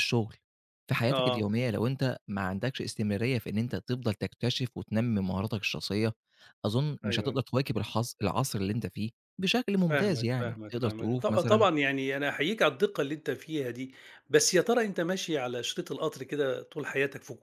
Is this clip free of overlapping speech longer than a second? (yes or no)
no